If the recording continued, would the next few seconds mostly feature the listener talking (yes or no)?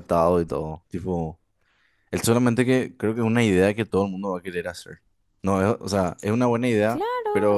yes